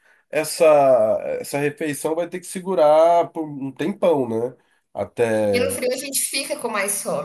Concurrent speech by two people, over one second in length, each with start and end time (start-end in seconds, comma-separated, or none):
none